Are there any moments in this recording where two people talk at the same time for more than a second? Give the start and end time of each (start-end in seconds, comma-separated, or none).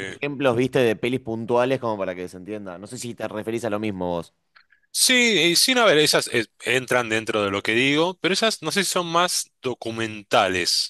none